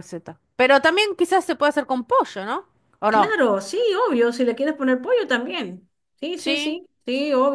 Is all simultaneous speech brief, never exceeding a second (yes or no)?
yes